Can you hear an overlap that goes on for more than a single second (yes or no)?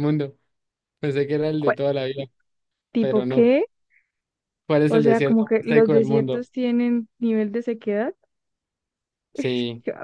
yes